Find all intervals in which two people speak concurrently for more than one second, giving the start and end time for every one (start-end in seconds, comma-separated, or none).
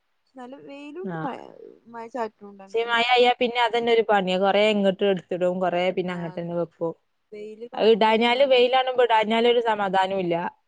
7.8-9.3